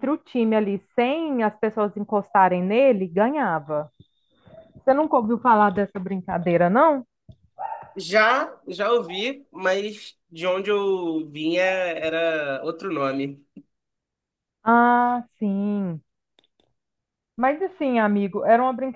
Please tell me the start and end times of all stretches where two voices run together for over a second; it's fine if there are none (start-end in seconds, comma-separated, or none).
none